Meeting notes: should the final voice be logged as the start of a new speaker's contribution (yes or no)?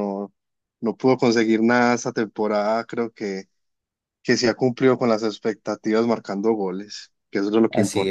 yes